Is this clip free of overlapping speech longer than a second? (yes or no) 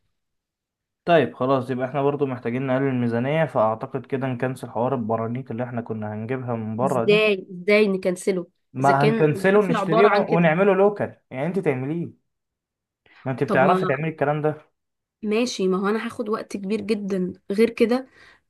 no